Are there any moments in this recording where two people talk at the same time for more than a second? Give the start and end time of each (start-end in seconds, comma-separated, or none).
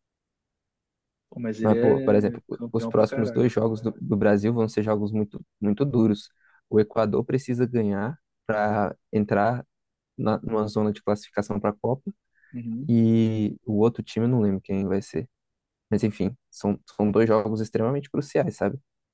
1.6-3.5